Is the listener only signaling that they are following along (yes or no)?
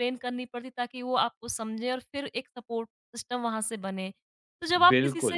yes